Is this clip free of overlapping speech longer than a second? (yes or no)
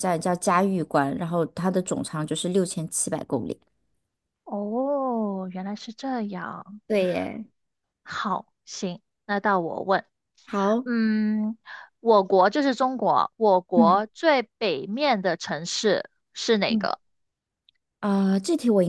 yes